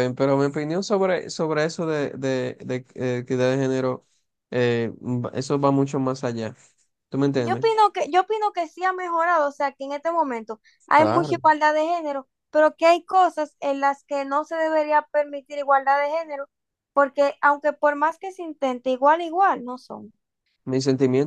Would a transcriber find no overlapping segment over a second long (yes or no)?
yes